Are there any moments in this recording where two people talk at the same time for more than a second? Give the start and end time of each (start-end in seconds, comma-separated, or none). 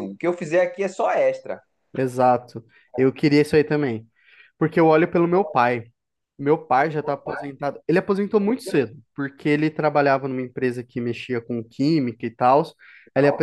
none